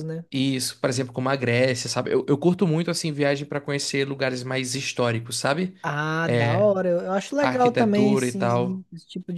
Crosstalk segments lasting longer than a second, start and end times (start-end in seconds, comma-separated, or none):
7.4-8.8